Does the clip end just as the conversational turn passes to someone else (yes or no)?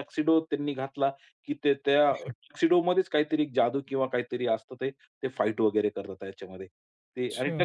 no